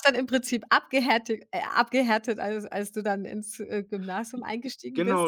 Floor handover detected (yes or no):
yes